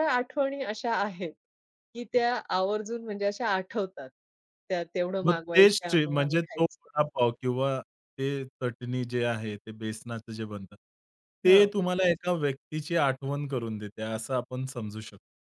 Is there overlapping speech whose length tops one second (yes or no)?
yes